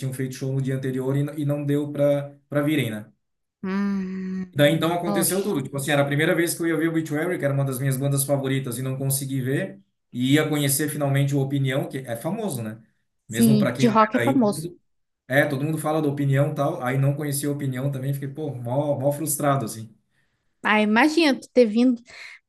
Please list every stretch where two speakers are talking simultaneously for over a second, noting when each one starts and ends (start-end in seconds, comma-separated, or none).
13.3-14.7